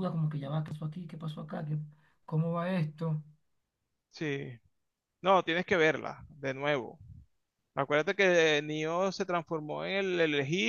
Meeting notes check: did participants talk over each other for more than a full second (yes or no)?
no